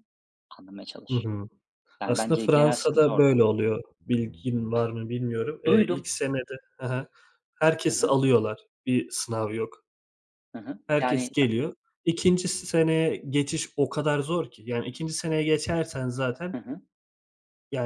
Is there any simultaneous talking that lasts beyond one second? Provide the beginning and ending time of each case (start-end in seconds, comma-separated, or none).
2.0-3.4